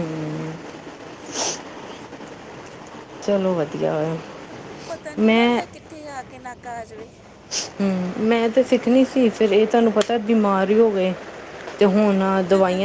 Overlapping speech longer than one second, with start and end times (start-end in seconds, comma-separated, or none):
none